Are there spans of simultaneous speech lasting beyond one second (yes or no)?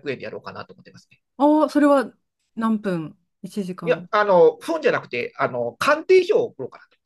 no